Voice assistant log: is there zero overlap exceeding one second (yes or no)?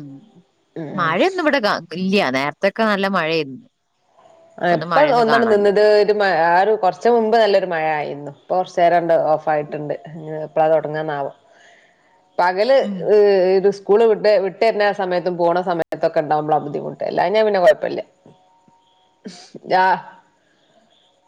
yes